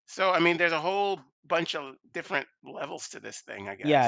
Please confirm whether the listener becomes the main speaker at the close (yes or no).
yes